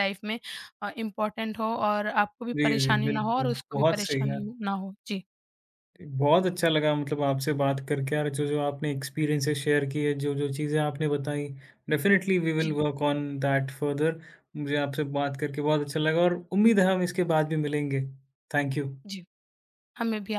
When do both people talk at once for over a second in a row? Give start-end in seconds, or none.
2.5-4.4